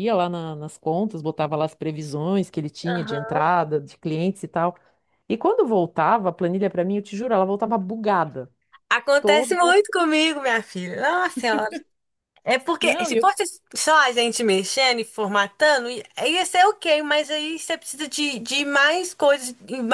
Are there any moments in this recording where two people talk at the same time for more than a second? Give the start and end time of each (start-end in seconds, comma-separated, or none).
none